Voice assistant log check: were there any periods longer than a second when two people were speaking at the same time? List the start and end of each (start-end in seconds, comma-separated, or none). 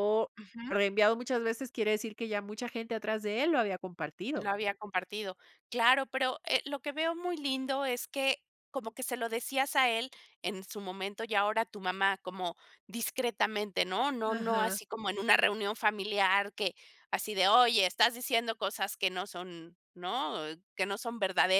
none